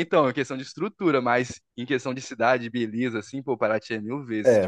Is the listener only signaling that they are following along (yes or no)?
no